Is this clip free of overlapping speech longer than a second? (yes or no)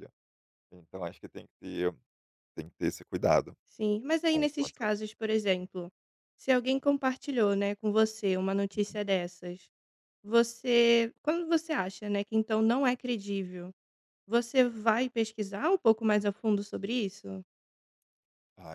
yes